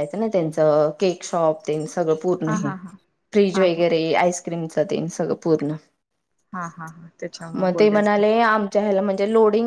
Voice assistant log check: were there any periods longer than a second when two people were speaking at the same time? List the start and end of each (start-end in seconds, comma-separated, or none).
none